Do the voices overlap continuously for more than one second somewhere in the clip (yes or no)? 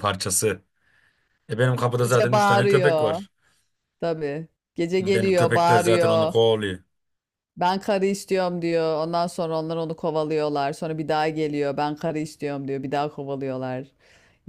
yes